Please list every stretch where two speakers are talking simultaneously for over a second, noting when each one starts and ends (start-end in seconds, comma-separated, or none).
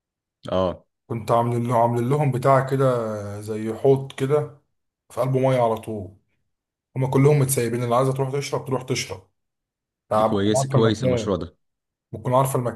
10.1-11.4